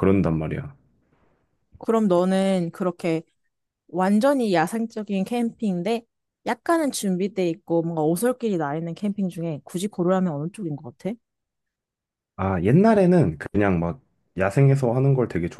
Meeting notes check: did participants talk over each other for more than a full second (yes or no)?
no